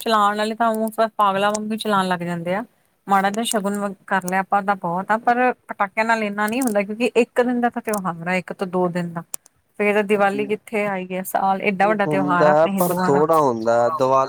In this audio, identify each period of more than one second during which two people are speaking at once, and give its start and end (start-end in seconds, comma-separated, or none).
11.8-13.2